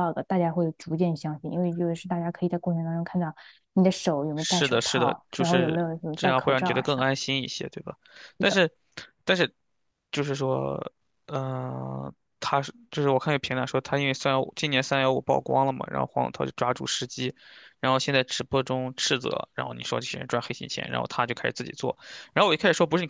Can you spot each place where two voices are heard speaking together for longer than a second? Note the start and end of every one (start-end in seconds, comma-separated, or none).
4.3-7.2